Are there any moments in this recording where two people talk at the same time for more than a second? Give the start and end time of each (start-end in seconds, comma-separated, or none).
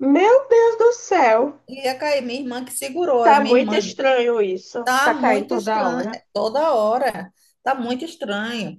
4.8-6.2